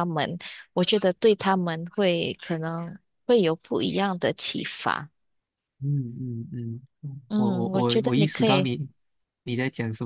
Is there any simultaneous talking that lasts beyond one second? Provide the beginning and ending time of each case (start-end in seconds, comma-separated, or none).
7.3-8.7